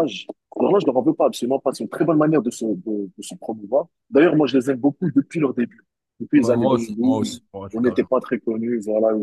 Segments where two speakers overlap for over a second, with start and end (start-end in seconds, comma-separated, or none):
6.3-8.1